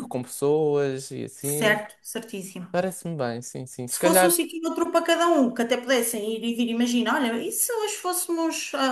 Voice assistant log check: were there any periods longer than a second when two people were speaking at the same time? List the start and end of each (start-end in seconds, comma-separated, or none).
none